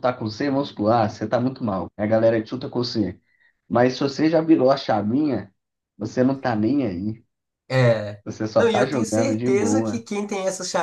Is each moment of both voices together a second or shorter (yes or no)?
no